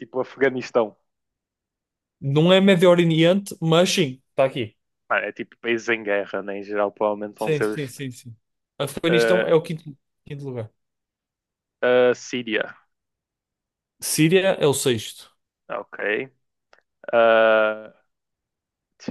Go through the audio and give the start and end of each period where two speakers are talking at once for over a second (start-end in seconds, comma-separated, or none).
none